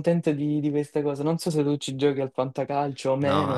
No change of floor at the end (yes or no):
no